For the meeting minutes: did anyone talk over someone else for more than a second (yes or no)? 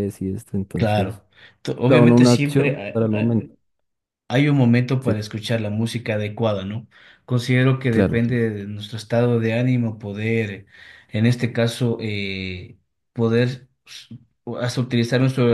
yes